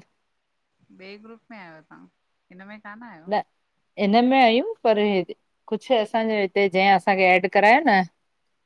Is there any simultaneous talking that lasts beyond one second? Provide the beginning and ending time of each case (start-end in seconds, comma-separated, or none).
none